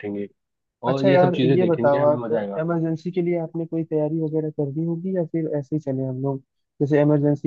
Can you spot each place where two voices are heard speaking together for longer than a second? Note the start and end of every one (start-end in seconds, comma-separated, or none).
0.9-2.6